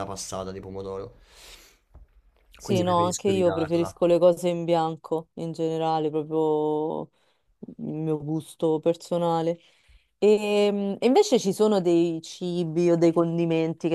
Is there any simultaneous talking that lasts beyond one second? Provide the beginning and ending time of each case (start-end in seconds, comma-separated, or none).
2.6-3.9